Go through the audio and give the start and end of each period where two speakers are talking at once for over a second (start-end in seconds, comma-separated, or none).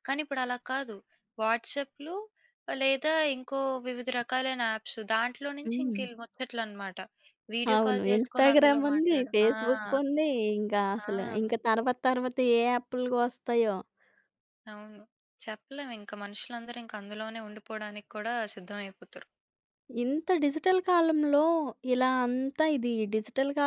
7.7-9.5